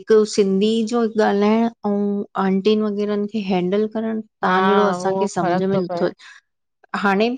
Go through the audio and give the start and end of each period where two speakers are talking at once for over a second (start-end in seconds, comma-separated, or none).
4.4-6.0